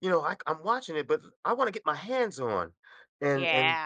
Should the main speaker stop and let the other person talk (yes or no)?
no